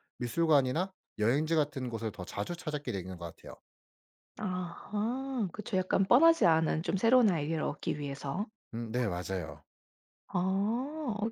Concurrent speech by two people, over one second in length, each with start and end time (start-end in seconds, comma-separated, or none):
none